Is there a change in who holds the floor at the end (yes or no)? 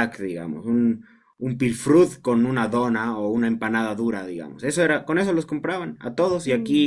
no